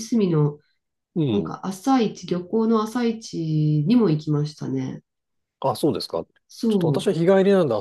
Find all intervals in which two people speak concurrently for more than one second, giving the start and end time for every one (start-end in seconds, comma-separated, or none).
none